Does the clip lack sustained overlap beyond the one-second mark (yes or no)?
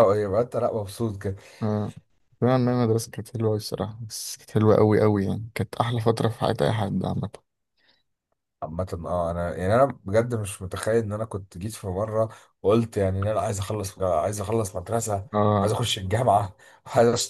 yes